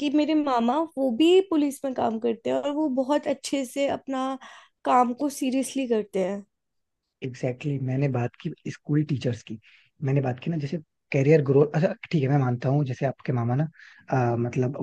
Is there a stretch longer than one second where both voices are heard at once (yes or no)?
no